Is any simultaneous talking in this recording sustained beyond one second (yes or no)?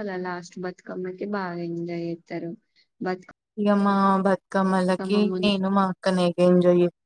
no